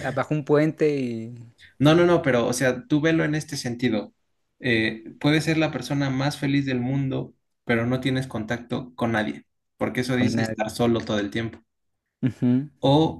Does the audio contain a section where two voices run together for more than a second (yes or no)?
no